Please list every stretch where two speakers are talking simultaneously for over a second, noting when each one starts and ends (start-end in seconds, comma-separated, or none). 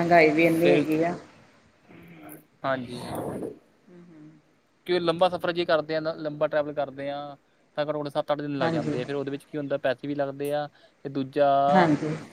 none